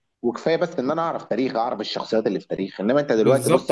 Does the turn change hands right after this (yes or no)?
yes